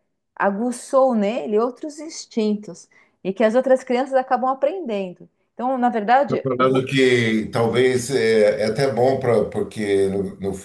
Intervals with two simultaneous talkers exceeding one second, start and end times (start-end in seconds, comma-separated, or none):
none